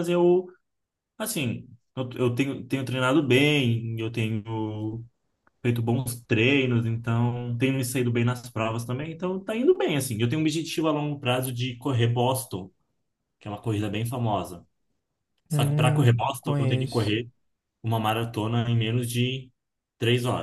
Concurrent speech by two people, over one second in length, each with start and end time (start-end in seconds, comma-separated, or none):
15.5-17.2